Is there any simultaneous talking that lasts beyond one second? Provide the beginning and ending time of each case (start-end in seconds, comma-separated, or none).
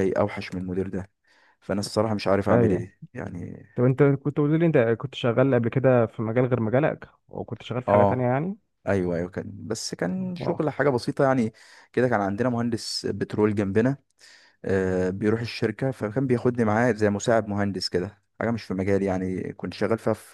none